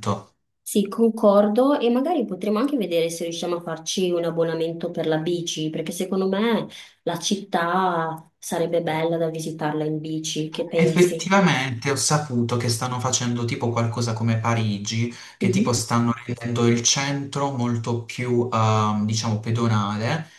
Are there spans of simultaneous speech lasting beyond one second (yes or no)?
no